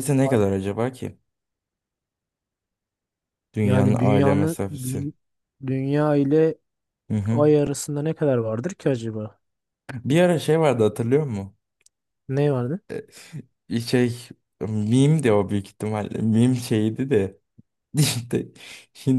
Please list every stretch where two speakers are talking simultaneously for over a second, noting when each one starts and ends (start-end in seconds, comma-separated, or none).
3.6-5.1